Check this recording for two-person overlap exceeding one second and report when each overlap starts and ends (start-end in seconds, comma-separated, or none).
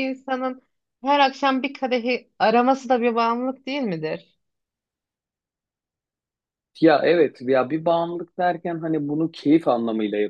none